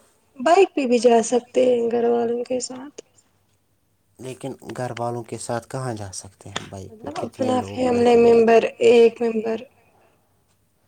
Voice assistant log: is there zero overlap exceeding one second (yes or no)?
no